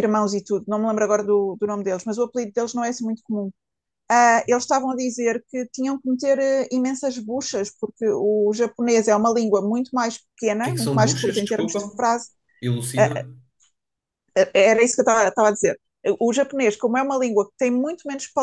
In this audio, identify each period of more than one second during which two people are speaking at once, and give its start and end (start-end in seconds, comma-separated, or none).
10.6-11.9